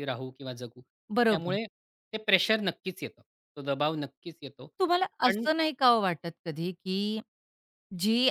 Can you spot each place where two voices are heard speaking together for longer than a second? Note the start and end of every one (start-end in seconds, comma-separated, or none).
none